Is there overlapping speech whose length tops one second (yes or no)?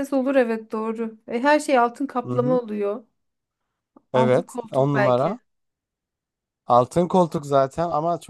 yes